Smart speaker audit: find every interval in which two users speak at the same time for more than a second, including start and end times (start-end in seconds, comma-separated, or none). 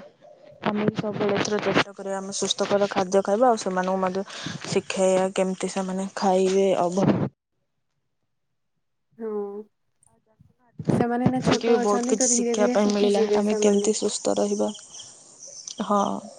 11.2-13.9